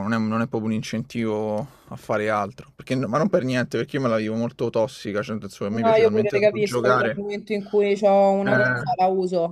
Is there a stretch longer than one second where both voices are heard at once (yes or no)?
yes